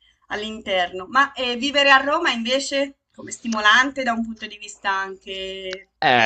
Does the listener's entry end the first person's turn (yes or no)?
yes